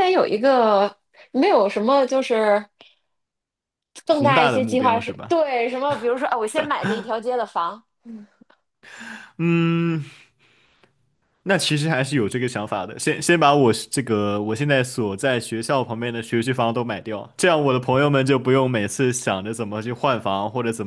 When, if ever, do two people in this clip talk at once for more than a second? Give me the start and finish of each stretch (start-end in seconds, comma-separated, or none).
4.1-5.4